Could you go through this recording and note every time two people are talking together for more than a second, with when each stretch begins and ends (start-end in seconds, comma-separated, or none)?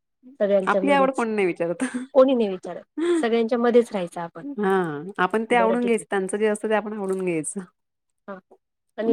none